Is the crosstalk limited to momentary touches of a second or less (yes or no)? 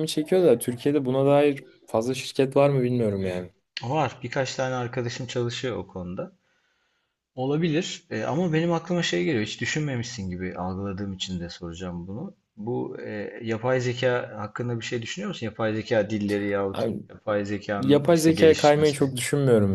no